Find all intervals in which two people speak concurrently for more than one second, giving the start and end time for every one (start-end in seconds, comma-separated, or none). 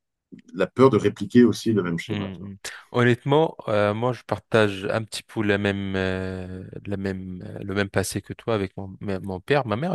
none